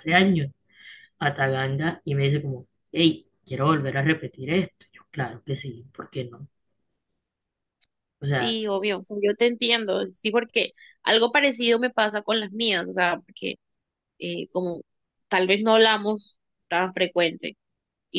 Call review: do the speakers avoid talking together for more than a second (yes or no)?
yes